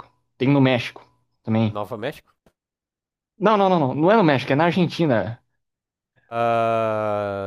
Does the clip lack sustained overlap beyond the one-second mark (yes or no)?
yes